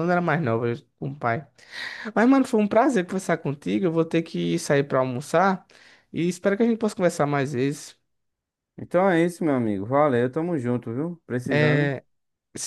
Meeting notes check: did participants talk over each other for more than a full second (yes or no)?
no